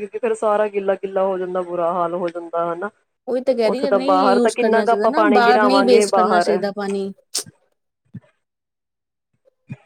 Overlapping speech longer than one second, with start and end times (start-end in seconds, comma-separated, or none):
3.7-6.5